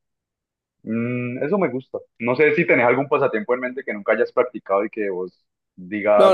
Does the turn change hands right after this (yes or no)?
yes